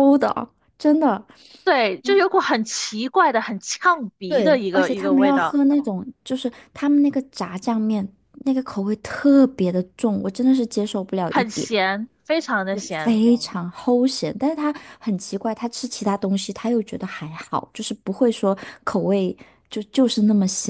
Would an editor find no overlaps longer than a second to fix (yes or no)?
no